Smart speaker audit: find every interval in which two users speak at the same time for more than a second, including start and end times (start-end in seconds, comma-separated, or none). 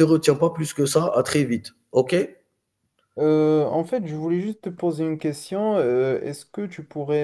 none